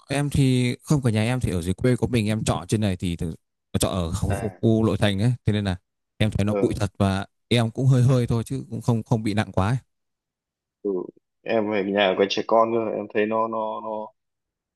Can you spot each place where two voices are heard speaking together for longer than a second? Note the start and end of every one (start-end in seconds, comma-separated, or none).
none